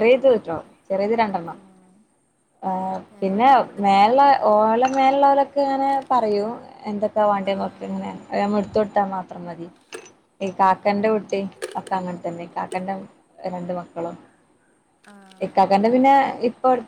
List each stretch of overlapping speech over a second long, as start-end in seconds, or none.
none